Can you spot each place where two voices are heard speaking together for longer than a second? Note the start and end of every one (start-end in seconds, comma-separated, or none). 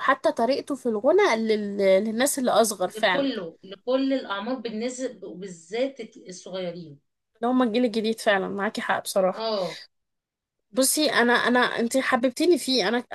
none